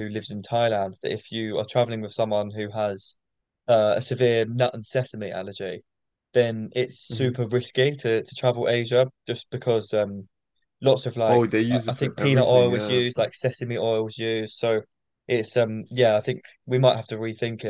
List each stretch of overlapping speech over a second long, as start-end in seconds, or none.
11.2-13.0